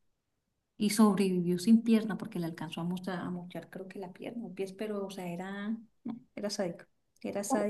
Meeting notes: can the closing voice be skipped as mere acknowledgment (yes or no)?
yes